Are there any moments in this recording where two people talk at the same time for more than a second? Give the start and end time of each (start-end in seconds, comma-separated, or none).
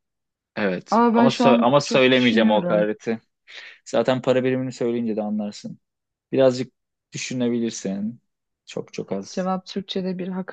1.0-2.9